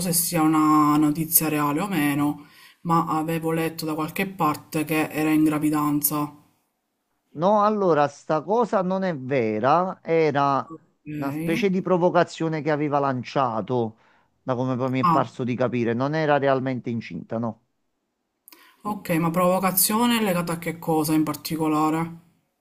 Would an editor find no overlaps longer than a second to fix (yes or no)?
yes